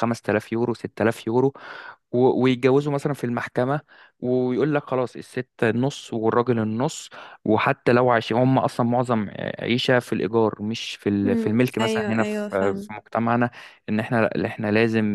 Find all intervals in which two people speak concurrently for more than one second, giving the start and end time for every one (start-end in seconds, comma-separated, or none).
11.2-12.9